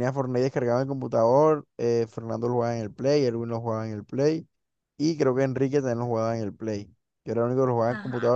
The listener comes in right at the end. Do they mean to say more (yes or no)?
no